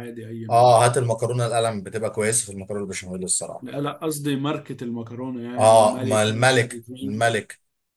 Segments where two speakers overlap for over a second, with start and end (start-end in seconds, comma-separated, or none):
5.6-7.4